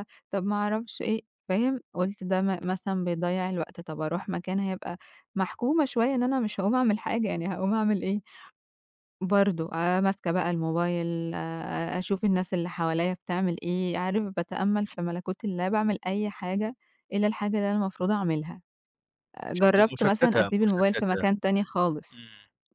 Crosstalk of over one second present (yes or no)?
yes